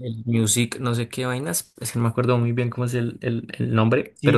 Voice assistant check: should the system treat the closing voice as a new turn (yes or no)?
yes